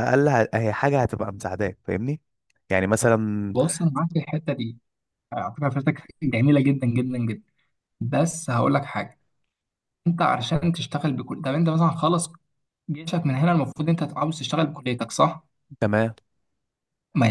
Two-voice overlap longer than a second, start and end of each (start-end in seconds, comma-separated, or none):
none